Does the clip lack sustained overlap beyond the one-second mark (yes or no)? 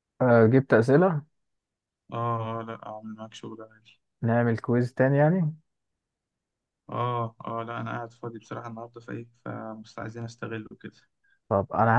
yes